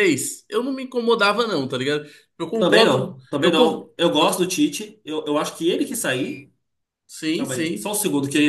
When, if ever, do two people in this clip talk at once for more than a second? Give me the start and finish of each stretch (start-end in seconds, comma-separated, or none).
2.6-4.4